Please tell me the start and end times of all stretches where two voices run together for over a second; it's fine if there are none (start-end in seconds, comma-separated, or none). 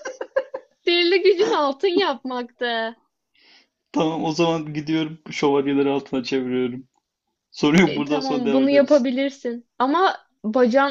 7.9-9.1